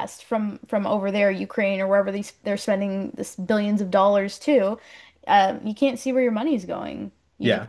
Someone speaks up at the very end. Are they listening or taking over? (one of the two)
listening